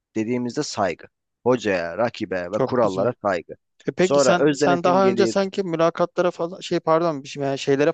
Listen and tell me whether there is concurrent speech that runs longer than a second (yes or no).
yes